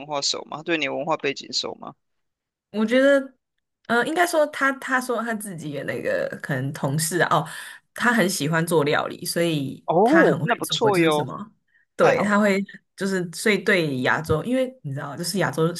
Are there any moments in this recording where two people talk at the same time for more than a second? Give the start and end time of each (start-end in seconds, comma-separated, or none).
9.8-11.3